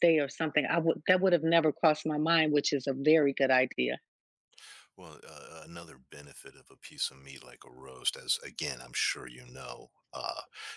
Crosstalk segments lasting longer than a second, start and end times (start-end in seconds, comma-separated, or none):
none